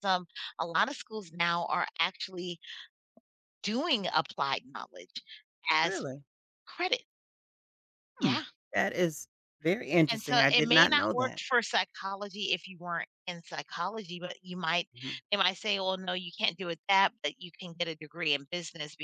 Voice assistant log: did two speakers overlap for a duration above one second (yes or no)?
yes